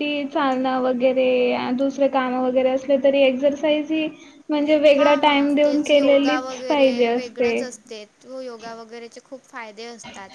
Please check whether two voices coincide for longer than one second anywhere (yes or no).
yes